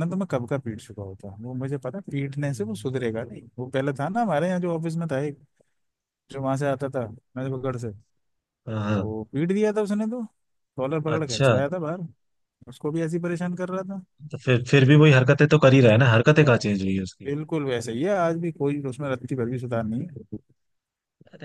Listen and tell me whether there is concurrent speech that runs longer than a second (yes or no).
no